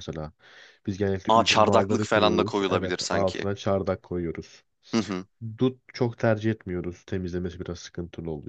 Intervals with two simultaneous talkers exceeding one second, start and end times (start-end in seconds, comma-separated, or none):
1.3-3.5